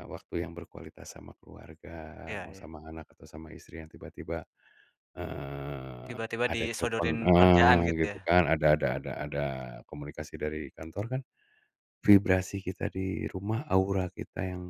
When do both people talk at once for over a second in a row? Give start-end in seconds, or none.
6.1-8.3